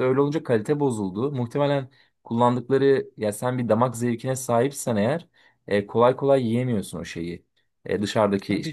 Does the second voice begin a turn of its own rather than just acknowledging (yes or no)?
no